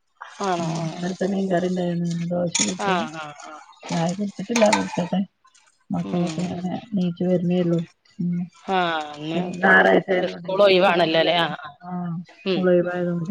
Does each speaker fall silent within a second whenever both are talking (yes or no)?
no